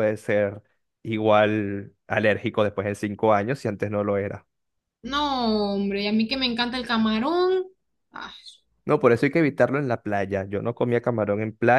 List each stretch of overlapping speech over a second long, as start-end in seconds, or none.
none